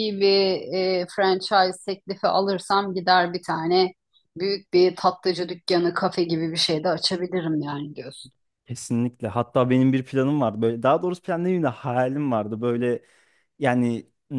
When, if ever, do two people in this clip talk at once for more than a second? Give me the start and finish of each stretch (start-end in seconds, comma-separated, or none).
none